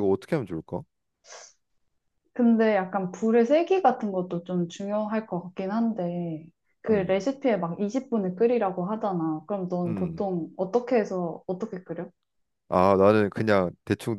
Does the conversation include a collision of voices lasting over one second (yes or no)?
no